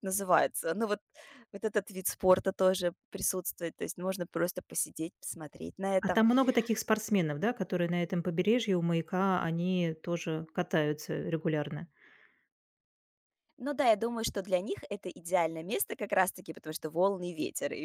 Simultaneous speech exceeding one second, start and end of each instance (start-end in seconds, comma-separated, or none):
none